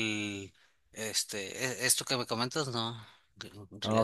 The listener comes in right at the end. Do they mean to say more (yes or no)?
yes